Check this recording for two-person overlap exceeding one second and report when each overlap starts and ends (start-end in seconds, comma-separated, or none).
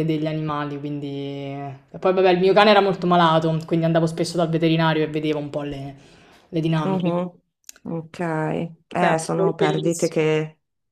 9.0-10.3